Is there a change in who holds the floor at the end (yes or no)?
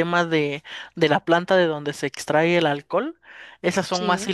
no